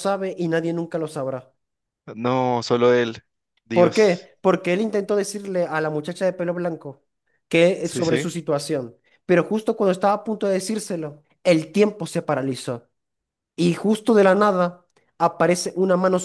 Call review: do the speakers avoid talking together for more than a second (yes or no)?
yes